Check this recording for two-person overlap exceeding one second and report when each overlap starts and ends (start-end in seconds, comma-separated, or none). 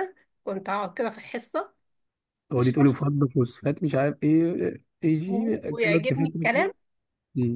5.3-6.7